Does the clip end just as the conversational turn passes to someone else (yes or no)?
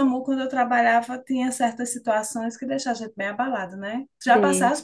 no